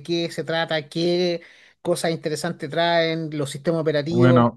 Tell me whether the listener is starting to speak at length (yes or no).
yes